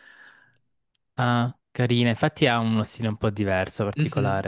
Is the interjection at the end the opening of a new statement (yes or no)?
yes